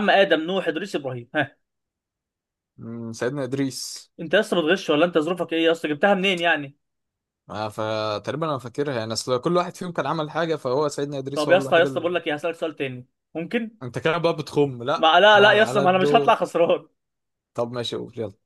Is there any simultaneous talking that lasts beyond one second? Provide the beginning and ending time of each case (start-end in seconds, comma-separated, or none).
15.0-16.4